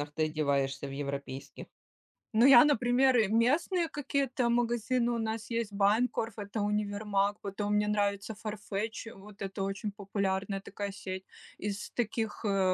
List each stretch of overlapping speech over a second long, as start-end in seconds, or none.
none